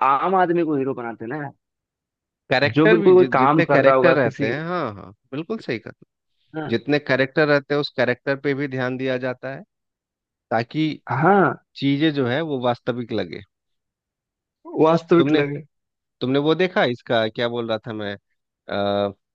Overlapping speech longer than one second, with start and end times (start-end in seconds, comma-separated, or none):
2.8-4.5